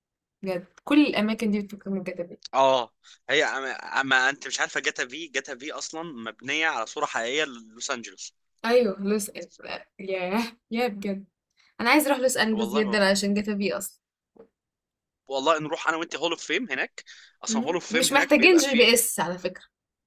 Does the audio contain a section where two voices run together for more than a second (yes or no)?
yes